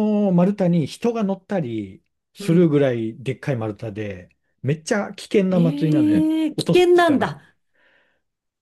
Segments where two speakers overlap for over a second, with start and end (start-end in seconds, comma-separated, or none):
5.5-7.3